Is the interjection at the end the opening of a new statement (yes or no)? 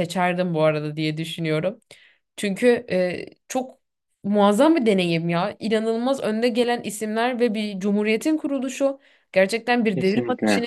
no